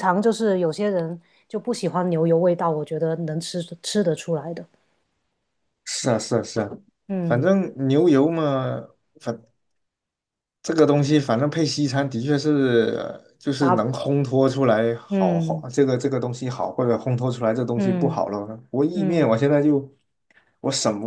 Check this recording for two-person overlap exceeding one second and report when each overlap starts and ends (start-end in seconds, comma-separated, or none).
none